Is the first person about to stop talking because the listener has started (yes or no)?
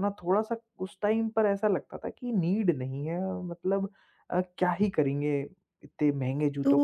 yes